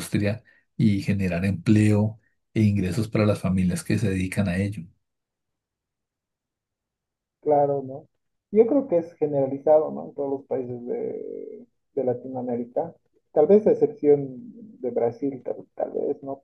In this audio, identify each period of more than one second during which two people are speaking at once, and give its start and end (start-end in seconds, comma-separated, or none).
none